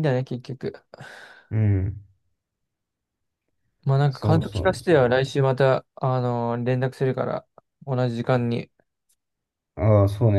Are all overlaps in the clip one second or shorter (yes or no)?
no